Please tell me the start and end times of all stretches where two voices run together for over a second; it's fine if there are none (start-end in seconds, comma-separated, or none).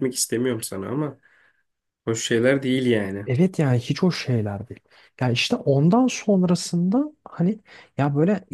none